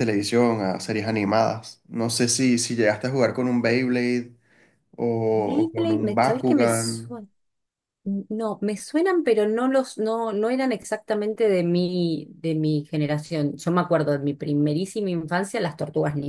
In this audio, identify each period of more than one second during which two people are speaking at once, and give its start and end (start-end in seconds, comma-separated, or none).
5.3-7.2